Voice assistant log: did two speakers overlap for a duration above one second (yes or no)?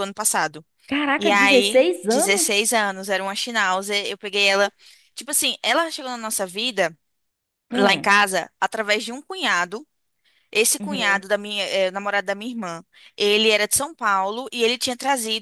yes